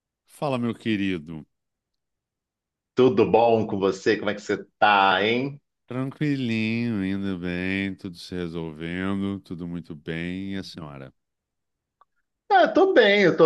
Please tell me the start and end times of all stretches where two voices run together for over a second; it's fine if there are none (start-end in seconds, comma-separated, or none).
none